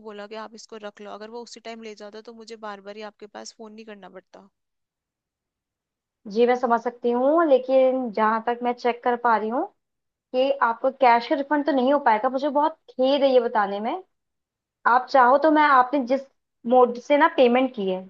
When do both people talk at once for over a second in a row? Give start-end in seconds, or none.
none